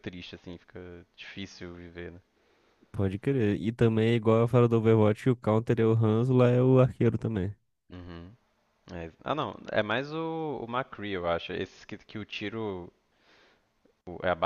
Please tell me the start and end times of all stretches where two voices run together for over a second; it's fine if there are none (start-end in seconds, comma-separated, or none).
none